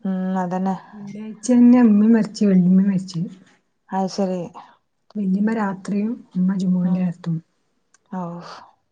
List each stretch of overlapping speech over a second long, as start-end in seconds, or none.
none